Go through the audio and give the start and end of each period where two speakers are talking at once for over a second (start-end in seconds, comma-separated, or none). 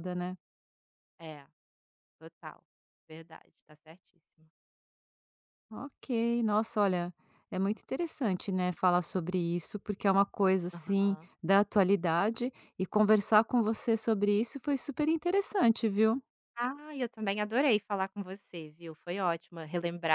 none